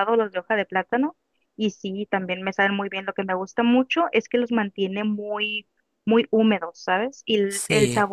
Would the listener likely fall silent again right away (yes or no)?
yes